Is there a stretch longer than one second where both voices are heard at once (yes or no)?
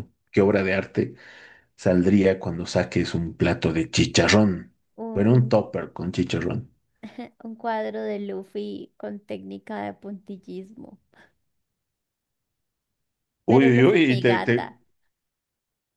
yes